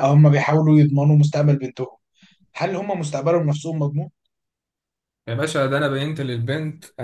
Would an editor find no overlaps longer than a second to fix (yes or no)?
yes